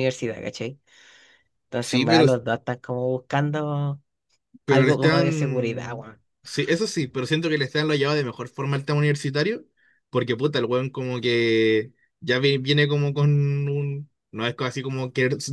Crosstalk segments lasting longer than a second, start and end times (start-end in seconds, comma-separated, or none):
4.7-6.1